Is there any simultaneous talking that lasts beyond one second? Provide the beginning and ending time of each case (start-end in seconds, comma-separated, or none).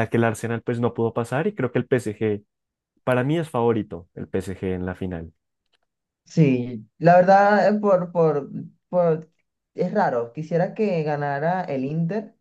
none